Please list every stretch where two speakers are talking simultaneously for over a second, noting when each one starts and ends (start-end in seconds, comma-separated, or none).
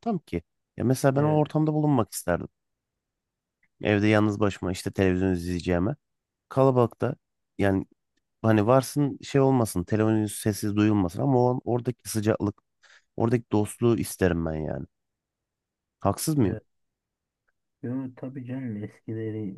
none